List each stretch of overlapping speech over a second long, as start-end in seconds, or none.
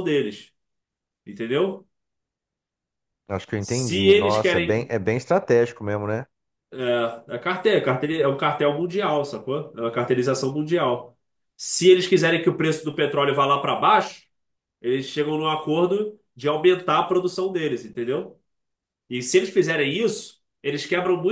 3.6-4.9